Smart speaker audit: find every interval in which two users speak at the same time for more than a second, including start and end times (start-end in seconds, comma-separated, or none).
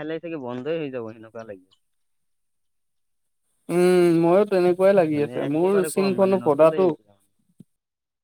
5.1-6.9